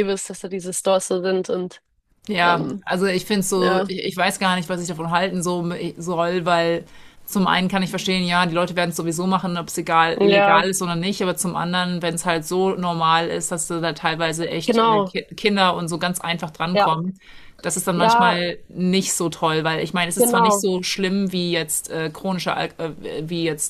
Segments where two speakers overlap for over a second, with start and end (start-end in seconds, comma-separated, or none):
none